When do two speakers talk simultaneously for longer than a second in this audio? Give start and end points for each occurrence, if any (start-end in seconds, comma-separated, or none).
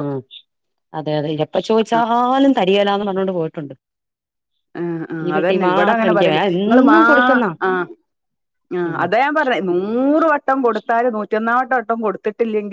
5.2-7.0